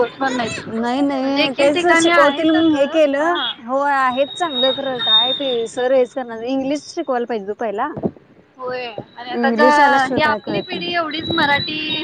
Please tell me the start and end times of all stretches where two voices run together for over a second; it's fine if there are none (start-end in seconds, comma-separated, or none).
1.2-3.4, 9.3-10.8